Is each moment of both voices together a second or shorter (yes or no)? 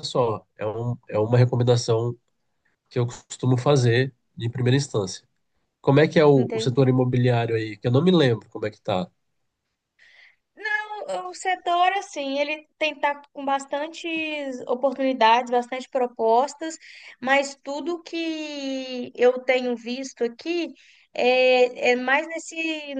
yes